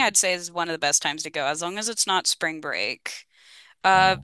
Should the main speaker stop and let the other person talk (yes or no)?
no